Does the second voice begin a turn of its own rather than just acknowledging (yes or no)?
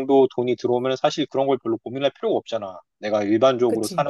no